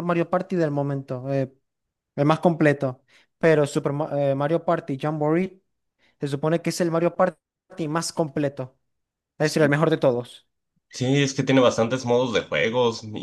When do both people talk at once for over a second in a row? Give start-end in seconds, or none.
none